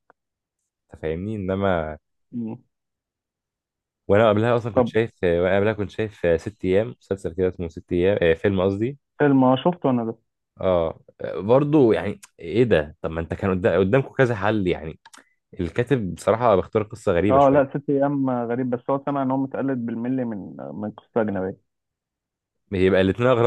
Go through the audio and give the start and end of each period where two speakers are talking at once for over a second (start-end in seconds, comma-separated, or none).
none